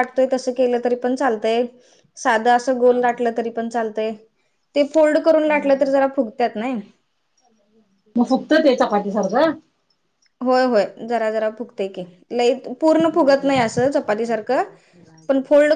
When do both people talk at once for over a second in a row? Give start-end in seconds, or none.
13.1-14.6